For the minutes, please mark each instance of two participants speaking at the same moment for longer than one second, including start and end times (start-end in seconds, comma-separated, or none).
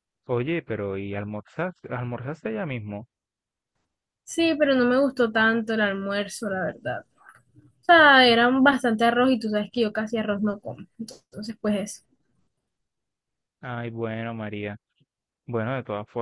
none